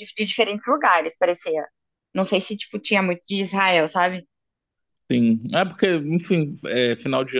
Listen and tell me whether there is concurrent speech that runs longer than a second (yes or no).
no